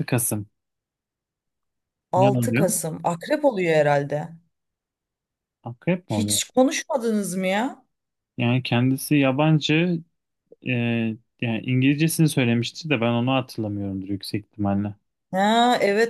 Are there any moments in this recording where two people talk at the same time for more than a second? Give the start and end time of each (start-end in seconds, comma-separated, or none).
none